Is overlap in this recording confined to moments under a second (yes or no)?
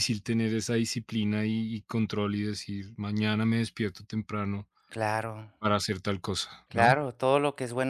yes